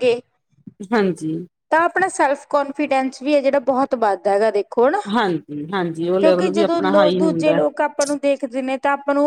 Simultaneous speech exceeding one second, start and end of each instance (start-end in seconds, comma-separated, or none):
6.2-7.5